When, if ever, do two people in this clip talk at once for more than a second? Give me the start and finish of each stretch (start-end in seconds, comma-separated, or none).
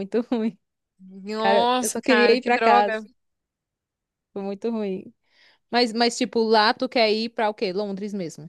1.4-3.0